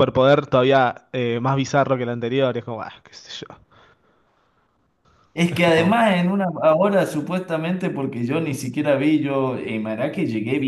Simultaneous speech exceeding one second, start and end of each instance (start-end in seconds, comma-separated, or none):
none